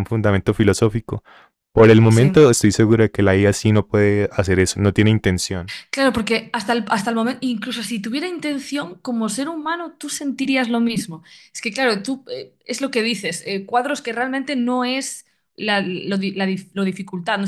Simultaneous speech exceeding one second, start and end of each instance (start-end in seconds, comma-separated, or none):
none